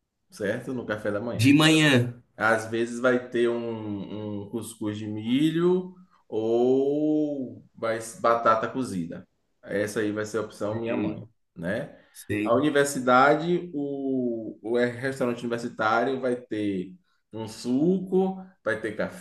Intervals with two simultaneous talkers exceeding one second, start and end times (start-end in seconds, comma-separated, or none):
none